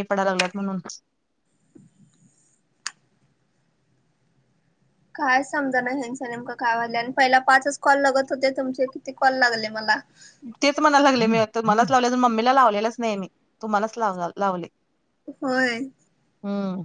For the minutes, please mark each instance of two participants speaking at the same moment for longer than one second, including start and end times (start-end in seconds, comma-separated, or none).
none